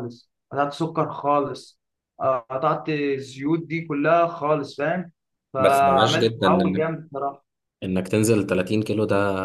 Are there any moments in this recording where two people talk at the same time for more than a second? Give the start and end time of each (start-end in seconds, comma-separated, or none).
5.6-6.8